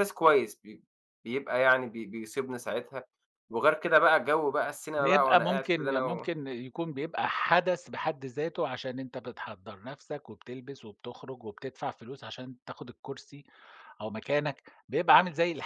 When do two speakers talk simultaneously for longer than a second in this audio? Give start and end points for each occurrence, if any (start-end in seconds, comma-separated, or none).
5.0-6.3